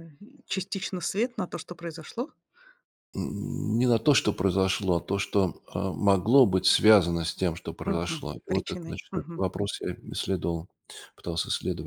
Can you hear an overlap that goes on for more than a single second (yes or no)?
yes